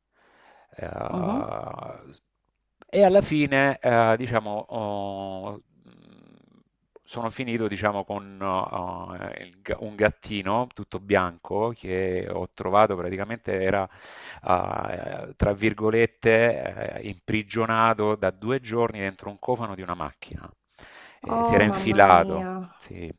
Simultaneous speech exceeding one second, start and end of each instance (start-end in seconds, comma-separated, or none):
21.3-22.5